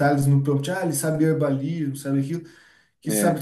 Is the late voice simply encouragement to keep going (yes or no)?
yes